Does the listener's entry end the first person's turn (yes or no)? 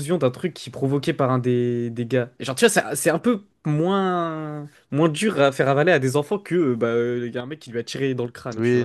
yes